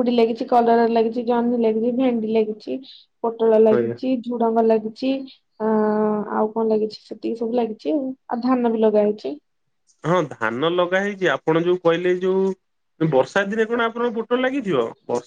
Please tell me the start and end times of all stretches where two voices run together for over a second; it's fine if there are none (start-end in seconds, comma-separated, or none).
none